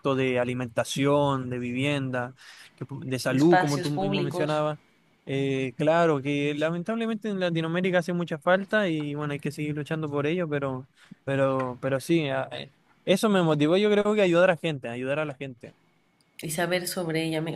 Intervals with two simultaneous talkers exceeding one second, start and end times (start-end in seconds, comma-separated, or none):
3.3-4.6